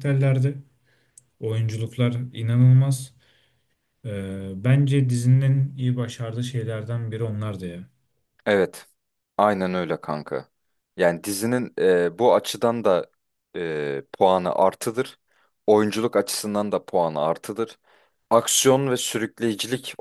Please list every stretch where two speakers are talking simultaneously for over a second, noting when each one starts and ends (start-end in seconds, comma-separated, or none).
none